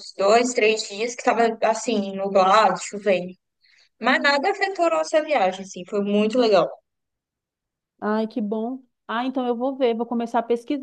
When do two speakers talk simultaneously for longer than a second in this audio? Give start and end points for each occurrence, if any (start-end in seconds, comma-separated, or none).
none